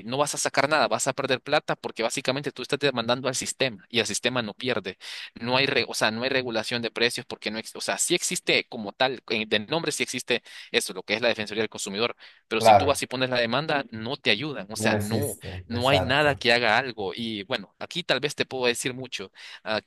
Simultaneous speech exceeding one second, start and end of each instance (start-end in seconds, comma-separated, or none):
14.7-16.4